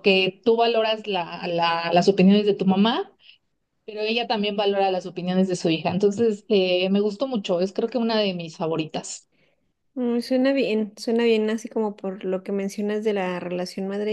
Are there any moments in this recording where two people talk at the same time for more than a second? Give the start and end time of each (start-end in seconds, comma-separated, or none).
none